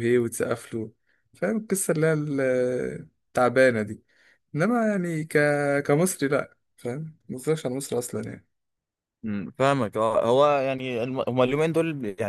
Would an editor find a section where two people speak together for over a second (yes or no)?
no